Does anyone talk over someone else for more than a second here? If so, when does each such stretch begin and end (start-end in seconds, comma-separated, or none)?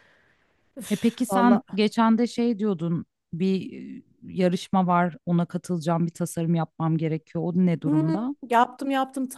none